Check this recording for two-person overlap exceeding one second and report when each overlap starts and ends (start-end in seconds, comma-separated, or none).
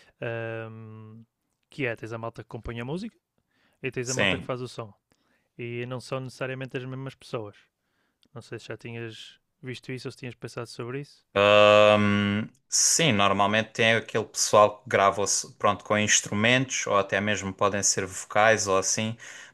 none